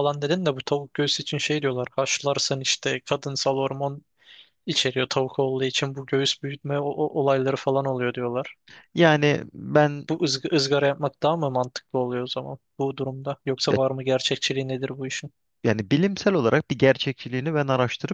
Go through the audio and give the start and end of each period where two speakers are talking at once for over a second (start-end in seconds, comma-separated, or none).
none